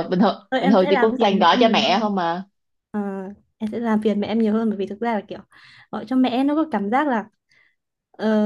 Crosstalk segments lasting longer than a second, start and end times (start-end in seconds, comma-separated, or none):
0.5-2.1